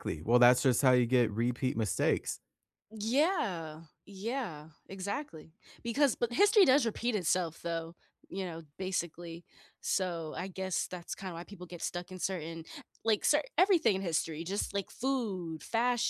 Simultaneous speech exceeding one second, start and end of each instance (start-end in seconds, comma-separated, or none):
none